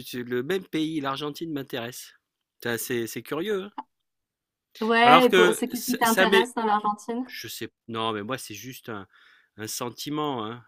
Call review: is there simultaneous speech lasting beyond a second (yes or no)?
yes